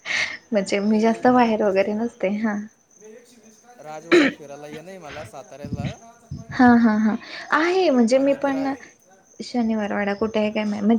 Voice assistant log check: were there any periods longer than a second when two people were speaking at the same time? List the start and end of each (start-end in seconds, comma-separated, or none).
0.8-2.5